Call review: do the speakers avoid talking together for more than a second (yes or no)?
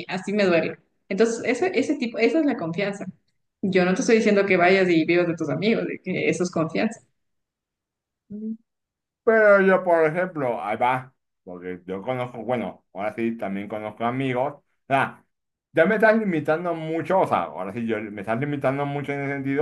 yes